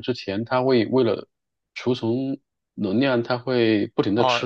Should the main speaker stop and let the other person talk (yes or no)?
yes